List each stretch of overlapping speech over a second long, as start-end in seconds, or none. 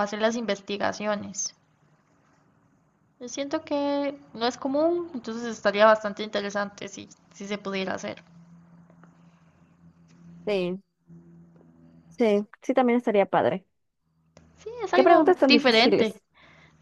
14.9-16.1